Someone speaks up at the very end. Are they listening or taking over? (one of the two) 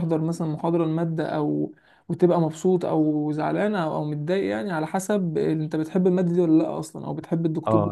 taking over